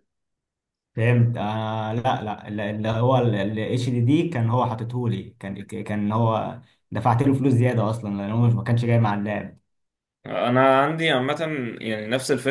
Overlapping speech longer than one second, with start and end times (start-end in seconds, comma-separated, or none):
none